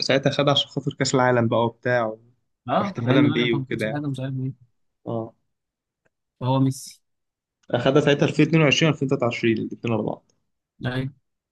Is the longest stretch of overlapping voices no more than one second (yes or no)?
no